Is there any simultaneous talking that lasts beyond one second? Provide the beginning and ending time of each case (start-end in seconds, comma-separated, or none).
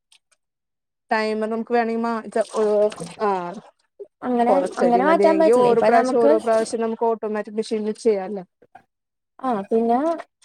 4.5-6.3